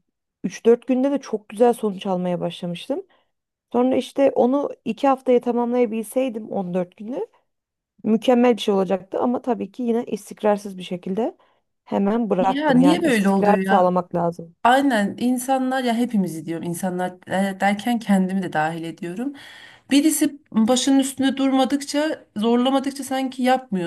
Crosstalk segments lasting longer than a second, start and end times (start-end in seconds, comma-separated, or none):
12.4-13.9